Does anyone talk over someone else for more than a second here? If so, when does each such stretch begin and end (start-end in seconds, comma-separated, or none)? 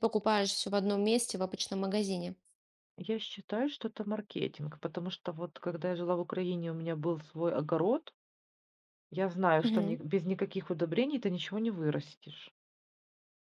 none